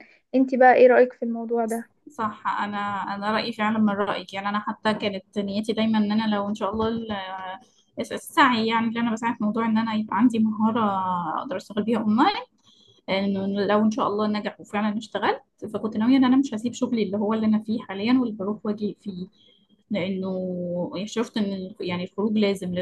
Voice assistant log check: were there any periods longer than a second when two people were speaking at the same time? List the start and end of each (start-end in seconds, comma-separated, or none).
none